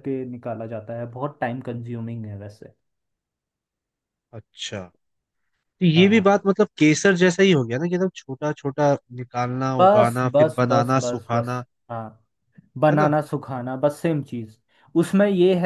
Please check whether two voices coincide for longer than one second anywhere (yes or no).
yes